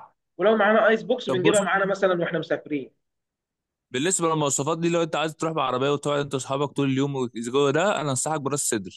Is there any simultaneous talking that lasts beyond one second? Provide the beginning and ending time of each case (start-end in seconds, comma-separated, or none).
none